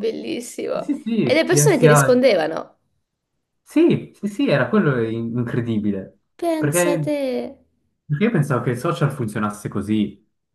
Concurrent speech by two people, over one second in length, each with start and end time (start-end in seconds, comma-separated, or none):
0.7-2.2